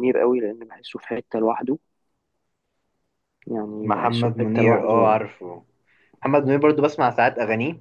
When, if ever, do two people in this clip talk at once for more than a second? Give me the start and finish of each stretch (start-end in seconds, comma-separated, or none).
3.8-5.2